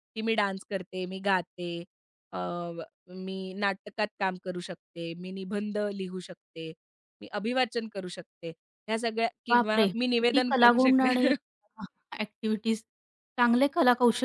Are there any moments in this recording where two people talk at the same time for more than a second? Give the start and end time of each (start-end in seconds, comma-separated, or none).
9.5-11.3